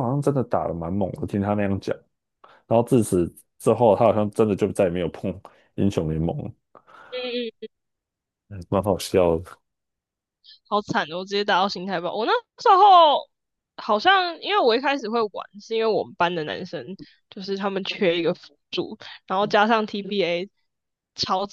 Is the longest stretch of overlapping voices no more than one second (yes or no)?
yes